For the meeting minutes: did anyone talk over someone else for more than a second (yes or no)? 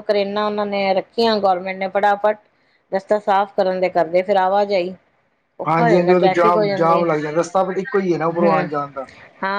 yes